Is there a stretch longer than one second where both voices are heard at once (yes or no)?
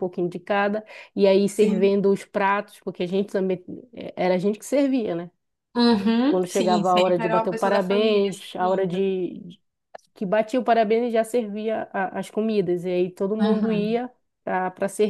yes